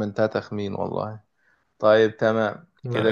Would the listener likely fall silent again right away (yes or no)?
yes